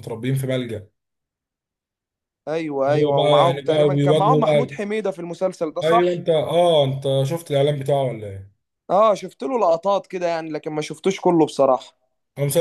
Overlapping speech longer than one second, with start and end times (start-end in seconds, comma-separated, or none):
2.9-4.8